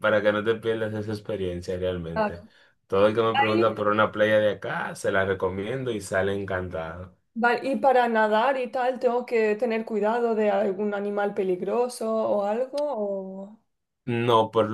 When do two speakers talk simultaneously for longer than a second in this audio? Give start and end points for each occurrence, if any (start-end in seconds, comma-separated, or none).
none